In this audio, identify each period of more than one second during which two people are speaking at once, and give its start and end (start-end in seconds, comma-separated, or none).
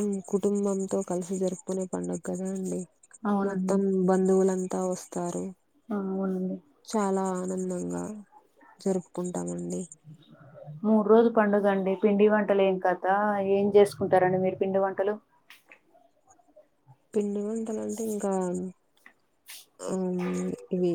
none